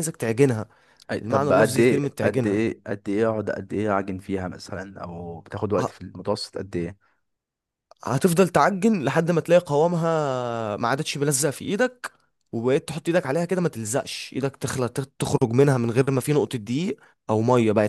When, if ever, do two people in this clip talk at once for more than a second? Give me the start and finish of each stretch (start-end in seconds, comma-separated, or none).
1.2-2.6